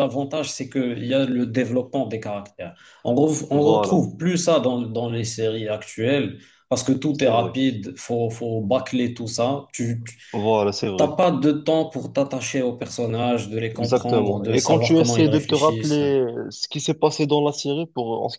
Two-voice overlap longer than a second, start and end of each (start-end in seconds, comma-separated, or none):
13.8-16.0